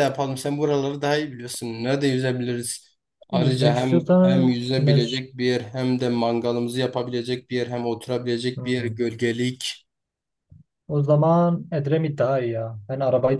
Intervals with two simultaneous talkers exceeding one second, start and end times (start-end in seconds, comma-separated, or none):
3.3-5.2